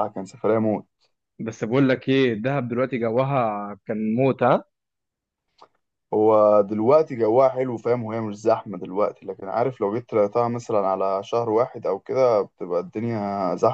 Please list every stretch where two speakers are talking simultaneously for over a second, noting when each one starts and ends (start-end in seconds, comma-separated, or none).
none